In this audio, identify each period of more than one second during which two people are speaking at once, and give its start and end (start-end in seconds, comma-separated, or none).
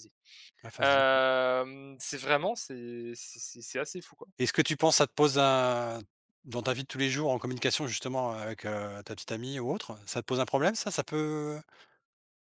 none